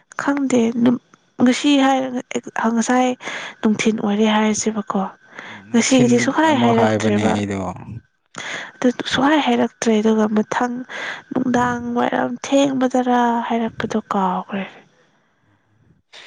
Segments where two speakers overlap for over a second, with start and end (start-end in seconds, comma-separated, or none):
5.7-7.3